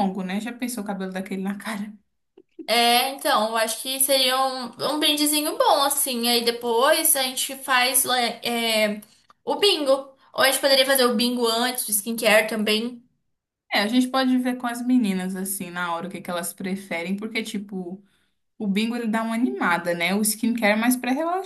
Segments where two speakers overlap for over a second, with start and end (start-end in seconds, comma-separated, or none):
none